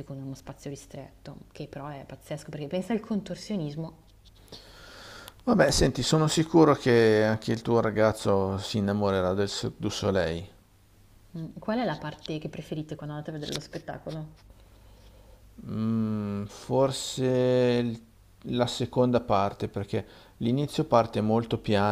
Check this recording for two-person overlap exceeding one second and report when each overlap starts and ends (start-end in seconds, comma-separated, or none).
none